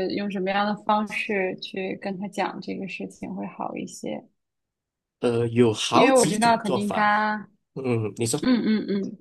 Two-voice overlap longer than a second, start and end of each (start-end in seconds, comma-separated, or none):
5.9-7.1